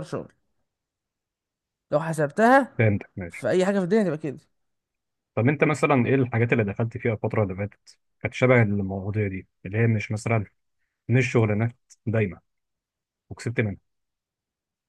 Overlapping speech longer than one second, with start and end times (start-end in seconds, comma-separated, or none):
none